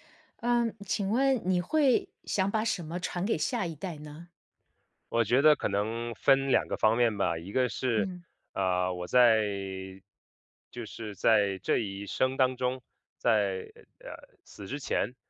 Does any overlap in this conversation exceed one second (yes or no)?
no